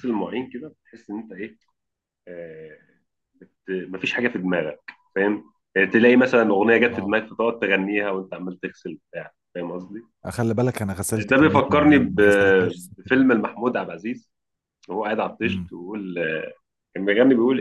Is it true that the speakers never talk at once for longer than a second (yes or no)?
no